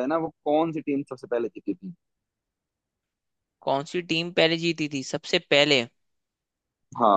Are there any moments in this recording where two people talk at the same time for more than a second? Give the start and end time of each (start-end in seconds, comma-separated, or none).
none